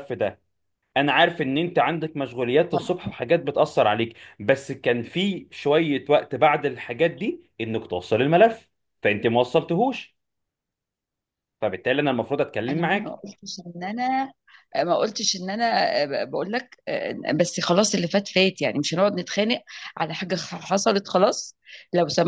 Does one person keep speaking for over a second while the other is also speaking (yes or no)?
no